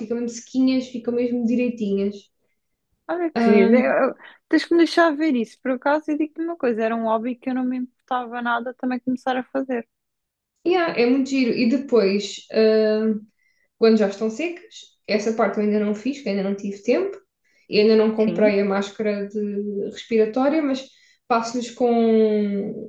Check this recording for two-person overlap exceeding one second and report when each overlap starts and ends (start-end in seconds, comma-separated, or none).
none